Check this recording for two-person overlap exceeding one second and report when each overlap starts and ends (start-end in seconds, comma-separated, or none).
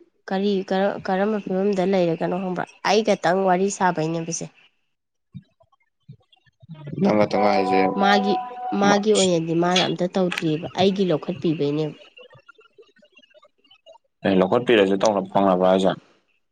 none